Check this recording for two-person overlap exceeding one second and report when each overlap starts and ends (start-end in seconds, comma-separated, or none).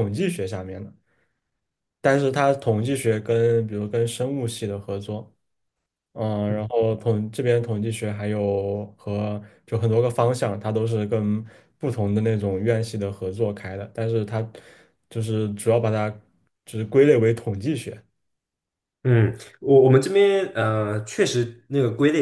none